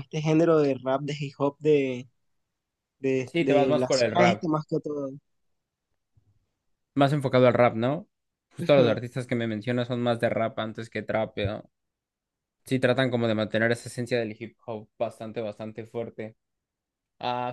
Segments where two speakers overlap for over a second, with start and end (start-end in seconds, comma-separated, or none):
3.2-4.5